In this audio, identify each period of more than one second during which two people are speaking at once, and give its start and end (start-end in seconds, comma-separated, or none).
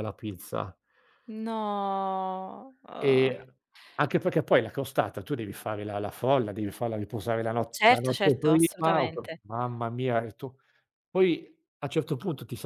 7.7-9.4